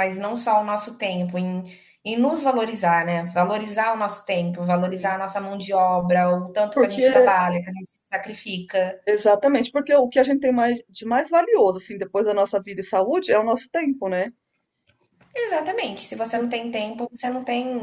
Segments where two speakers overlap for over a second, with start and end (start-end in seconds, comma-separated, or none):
none